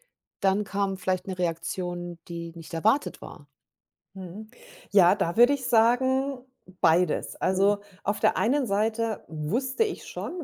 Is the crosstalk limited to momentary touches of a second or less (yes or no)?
yes